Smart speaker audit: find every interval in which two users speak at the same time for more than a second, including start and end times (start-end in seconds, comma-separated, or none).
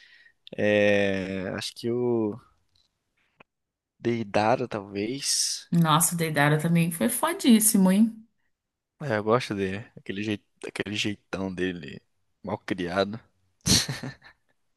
none